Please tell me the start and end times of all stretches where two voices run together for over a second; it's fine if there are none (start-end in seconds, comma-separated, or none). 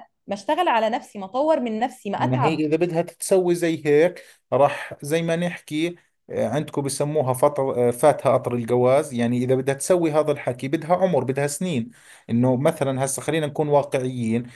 none